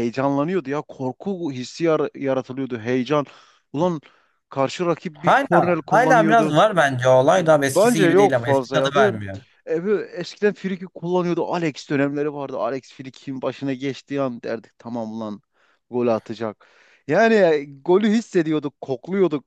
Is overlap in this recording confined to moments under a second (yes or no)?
no